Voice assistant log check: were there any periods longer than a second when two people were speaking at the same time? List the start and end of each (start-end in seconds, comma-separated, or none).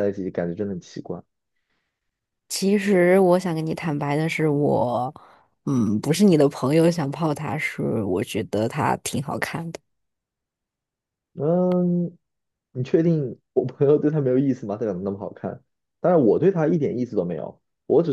none